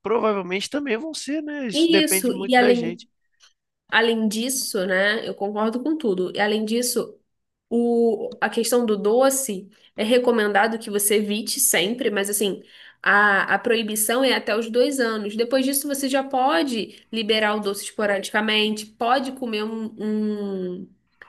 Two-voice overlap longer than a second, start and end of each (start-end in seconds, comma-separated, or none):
1.7-3.0